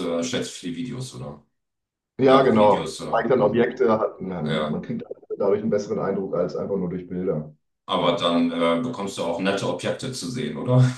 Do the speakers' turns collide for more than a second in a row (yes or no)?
yes